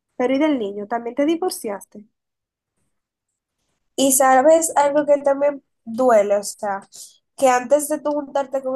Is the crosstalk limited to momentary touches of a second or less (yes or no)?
yes